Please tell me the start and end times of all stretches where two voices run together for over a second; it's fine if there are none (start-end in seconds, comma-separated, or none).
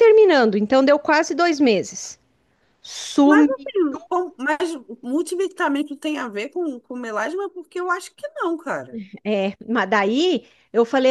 none